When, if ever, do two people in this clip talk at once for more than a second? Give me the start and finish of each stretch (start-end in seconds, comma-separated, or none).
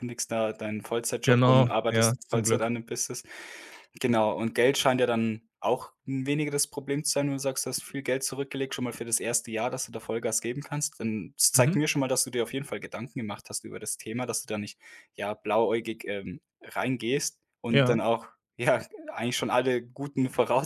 1.2-2.7